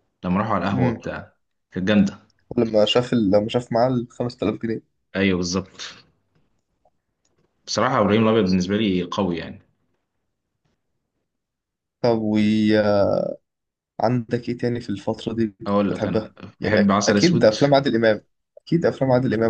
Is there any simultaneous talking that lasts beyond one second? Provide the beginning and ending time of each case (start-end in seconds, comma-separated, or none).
15.9-17.5